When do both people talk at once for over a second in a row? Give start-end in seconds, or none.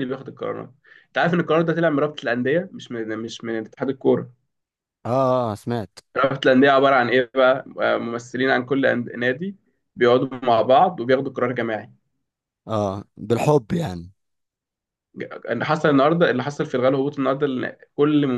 none